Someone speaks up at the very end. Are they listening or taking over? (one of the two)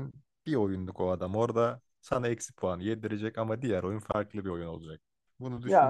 listening